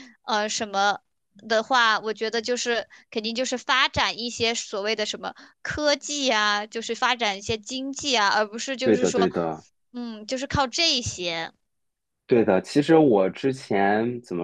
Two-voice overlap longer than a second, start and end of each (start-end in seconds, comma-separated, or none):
none